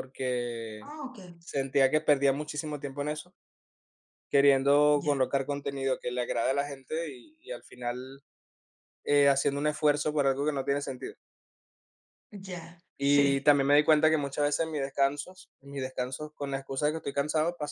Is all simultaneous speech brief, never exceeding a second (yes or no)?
yes